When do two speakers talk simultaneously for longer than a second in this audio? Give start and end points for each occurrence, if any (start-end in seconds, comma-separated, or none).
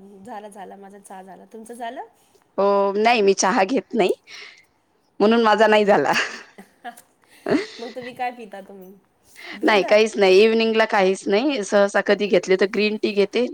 none